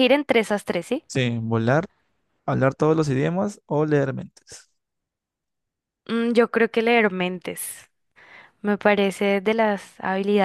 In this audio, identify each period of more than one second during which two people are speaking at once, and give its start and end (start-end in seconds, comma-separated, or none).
none